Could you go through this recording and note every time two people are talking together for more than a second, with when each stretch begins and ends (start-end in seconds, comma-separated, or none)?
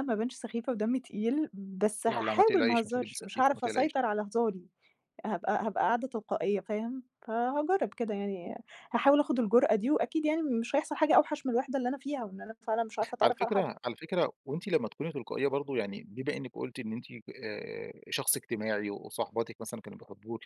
2.1-4.0